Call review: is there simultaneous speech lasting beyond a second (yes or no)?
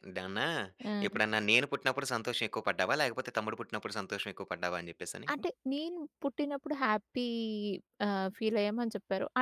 no